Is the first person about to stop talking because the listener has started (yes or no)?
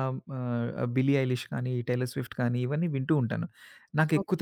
no